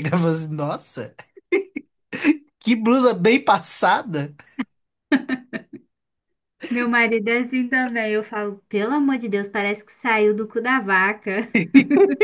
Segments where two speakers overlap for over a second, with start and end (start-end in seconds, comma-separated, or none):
none